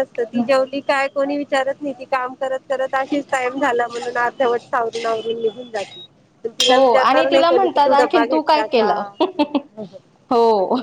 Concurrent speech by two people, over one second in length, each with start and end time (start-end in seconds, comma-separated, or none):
6.7-9.0